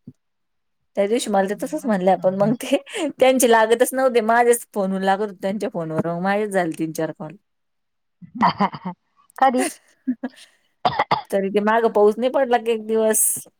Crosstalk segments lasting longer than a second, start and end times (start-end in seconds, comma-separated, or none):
1.2-2.6